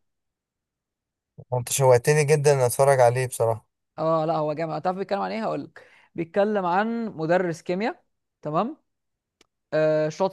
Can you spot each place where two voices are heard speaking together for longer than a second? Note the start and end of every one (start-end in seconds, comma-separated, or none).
none